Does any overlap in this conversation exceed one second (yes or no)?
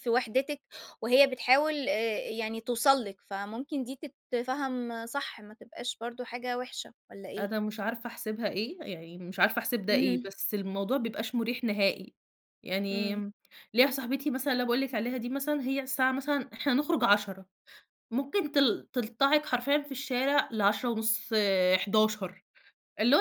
no